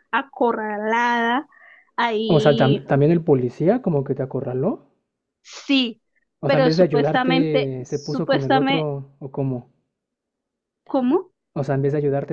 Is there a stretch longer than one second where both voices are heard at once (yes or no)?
yes